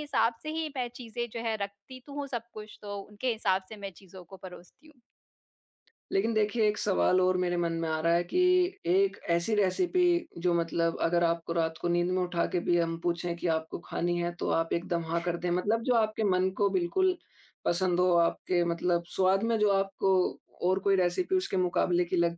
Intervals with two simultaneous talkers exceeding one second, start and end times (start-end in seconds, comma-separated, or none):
none